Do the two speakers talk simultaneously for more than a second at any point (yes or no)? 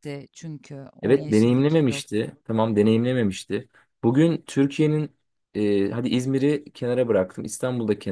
yes